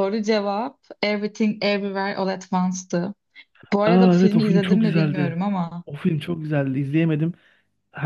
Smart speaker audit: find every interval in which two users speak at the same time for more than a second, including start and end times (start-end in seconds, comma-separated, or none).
3.8-5.4